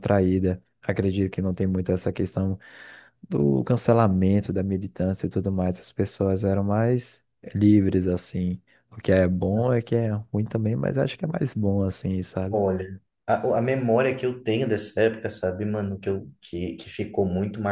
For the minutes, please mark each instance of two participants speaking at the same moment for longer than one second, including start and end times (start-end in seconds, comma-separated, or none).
none